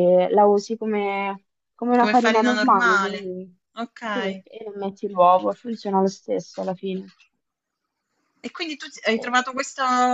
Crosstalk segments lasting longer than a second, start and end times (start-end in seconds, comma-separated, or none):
2.0-3.3